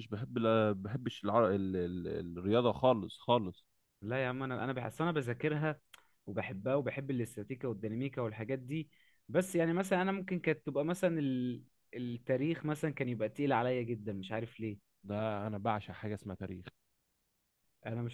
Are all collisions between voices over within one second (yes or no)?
yes